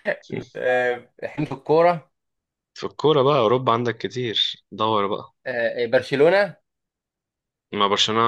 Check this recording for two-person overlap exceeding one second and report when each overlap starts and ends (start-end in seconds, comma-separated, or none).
none